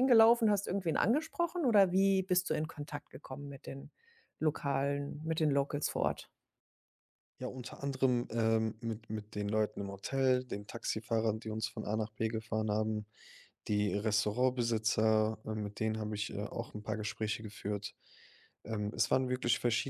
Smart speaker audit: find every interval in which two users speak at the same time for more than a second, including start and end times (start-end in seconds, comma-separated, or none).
none